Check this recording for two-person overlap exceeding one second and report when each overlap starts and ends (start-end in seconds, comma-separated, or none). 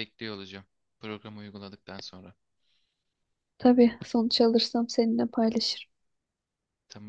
none